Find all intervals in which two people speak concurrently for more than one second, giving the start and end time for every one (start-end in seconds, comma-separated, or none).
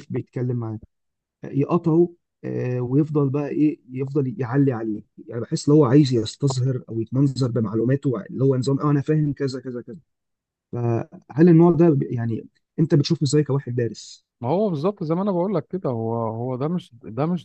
none